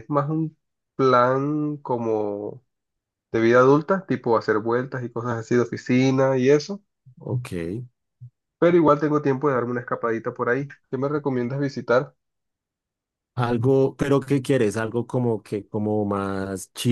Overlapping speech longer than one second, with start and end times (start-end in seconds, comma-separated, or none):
none